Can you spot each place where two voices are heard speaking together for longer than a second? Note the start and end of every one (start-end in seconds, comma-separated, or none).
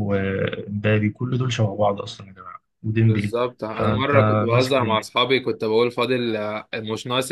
3.1-5.1